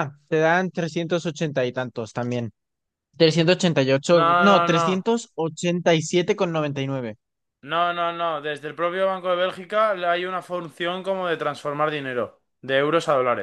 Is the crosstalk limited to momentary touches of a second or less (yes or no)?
yes